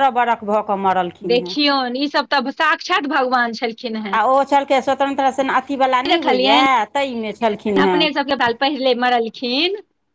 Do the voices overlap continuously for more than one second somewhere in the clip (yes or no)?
no